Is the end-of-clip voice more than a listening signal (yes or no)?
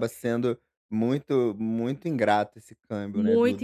yes